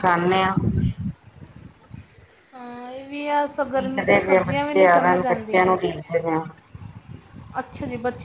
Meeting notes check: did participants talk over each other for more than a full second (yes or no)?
yes